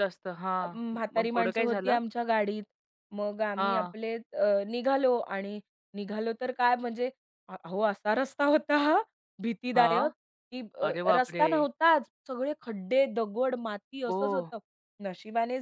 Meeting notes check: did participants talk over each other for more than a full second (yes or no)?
yes